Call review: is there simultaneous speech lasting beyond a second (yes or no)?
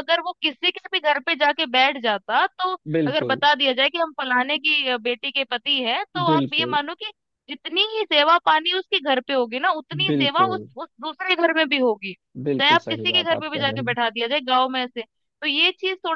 yes